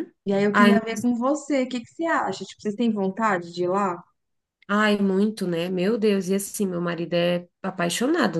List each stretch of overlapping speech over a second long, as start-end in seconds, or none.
none